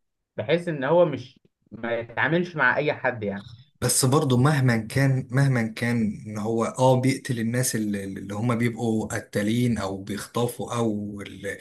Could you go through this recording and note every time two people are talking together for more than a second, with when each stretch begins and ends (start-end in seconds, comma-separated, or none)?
none